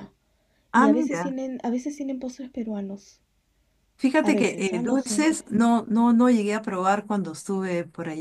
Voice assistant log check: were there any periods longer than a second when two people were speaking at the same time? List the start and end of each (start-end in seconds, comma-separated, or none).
4.2-5.4